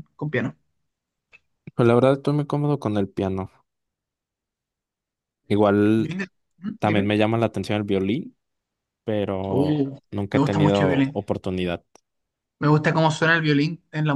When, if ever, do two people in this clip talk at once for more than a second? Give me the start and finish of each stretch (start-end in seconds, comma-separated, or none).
9.5-11.2